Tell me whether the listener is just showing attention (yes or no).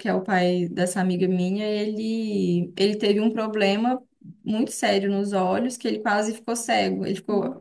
yes